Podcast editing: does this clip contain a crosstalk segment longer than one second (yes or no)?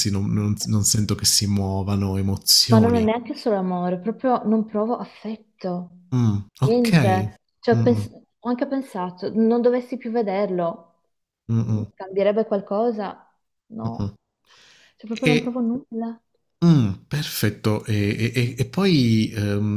no